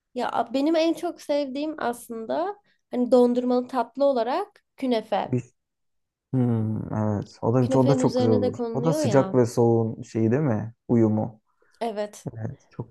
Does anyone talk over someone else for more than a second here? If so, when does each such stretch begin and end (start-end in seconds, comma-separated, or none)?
7.6-9.4